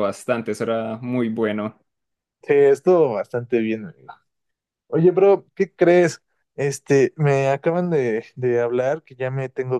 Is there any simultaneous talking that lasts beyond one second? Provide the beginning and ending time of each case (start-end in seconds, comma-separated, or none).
none